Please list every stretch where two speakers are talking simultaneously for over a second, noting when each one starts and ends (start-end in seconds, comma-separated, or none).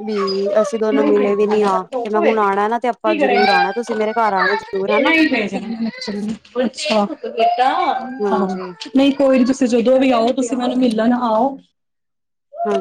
none